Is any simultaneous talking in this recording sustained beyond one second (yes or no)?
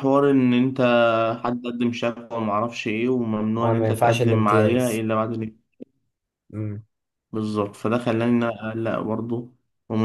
yes